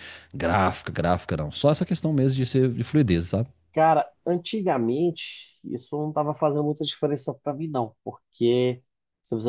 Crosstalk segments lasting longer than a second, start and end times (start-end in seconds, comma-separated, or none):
none